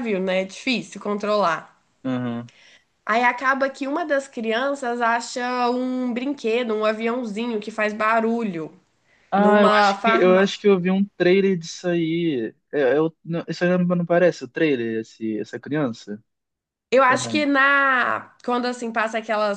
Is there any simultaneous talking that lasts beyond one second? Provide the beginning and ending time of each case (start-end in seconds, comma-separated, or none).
9.3-10.6